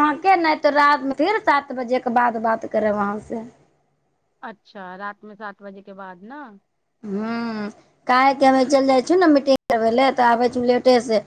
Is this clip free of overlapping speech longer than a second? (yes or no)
yes